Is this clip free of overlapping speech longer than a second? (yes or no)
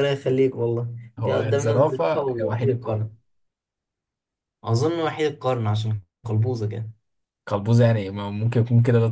no